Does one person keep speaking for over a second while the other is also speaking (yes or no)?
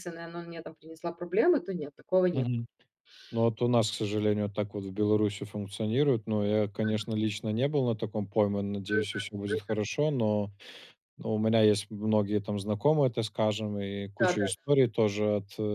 no